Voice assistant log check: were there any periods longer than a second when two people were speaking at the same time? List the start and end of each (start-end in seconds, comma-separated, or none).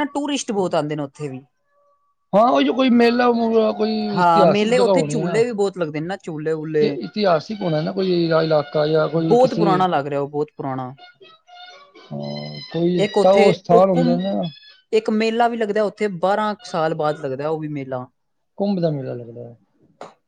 4.2-5.4